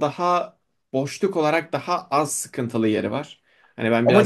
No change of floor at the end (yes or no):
no